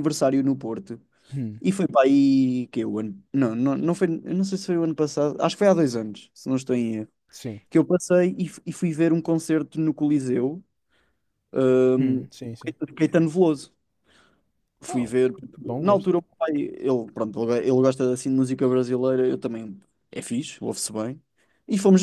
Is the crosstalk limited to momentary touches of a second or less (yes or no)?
yes